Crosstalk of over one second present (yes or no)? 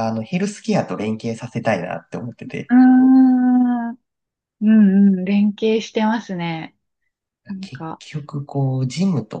no